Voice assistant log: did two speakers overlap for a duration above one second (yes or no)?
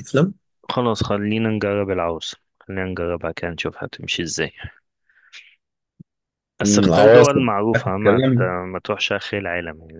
yes